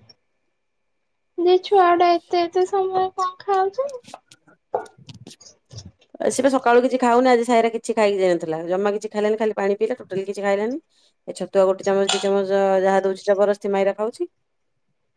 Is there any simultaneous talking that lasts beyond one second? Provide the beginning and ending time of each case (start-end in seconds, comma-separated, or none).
none